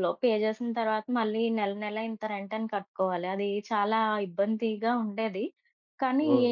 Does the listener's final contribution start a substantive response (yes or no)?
no